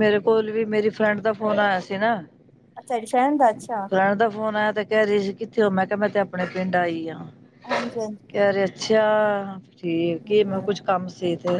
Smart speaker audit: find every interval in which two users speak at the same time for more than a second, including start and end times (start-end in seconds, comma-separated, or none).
none